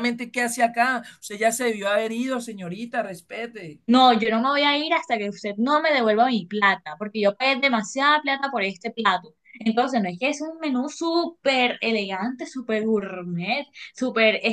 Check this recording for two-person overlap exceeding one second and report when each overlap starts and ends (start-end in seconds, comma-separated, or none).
none